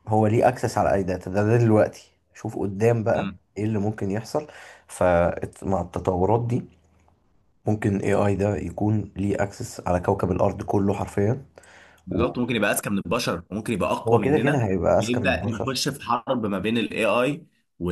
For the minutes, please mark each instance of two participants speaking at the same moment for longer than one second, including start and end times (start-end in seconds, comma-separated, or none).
14.2-15.8